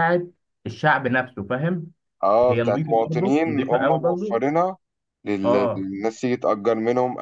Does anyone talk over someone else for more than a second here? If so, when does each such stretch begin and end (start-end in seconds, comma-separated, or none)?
2.5-4.4